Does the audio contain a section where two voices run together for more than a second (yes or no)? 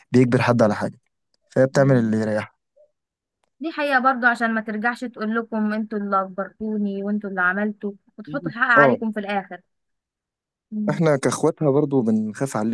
no